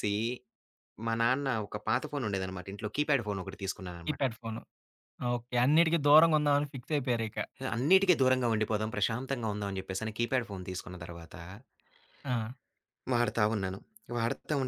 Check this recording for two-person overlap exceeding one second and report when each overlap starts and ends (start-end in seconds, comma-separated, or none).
none